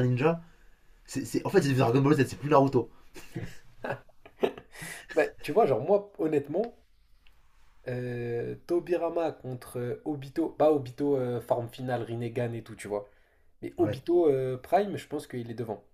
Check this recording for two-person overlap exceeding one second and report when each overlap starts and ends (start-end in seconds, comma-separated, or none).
none